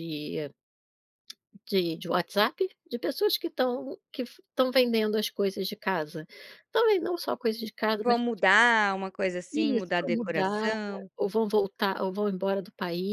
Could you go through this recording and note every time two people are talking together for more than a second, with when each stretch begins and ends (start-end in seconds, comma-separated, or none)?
9.5-10.7